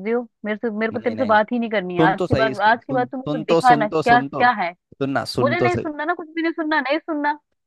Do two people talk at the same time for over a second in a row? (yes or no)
yes